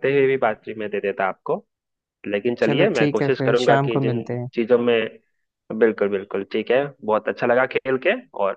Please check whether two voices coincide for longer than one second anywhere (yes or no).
yes